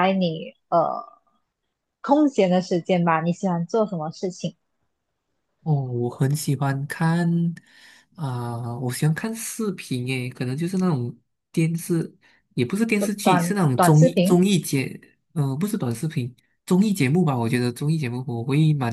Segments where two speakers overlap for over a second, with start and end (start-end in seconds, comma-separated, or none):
13.0-14.4